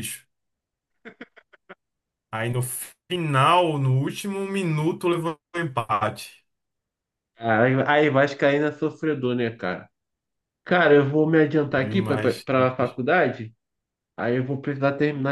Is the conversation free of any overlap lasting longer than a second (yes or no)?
no